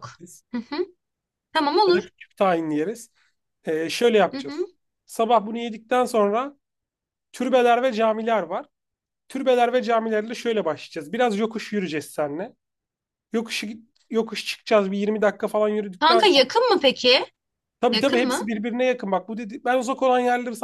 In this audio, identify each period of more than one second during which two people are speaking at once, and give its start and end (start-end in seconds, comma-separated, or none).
none